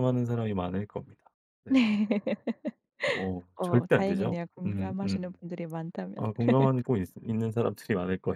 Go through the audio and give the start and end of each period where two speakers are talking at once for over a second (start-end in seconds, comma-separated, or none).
3.6-5.4